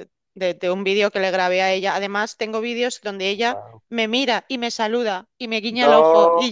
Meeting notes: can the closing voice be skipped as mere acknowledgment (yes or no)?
yes